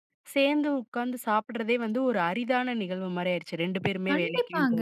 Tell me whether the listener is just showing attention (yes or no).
no